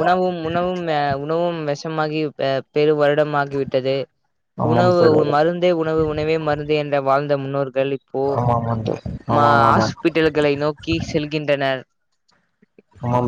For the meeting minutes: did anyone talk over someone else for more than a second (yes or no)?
no